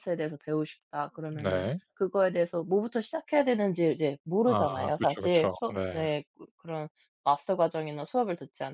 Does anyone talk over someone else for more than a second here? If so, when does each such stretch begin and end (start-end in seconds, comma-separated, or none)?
4.4-6.1